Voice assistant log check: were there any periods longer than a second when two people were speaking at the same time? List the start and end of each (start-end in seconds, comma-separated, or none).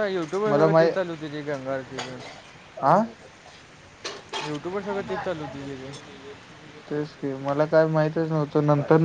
none